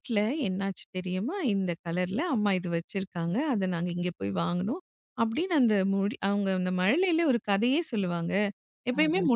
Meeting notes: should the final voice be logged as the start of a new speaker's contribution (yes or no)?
no